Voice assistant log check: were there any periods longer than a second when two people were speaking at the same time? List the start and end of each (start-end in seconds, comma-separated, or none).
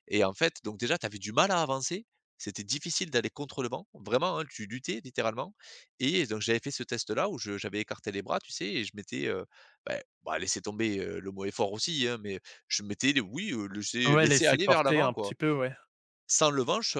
14.0-15.3